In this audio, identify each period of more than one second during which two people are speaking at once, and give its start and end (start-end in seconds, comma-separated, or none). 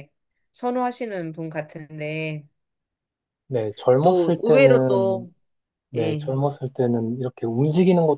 4.0-5.3